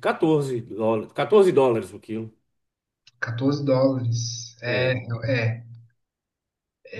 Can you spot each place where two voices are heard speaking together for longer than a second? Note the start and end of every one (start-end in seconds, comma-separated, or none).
none